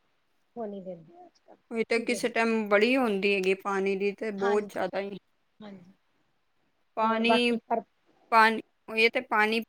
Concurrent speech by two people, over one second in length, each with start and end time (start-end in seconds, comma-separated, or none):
none